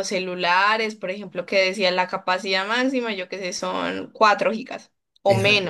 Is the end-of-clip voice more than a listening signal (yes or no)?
yes